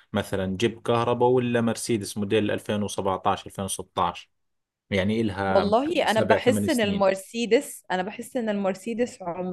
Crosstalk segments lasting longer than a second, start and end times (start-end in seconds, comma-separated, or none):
5.5-7.1